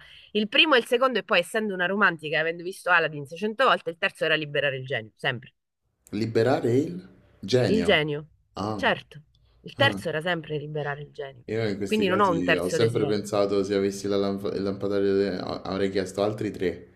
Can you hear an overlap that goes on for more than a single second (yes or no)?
yes